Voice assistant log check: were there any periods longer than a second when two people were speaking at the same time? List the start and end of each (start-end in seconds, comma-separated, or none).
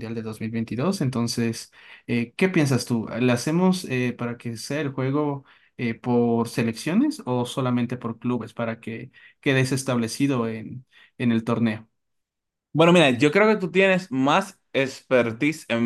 none